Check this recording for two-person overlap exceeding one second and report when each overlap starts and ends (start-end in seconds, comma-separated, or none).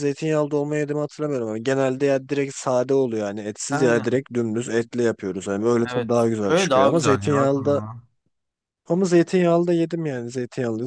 5.9-7.8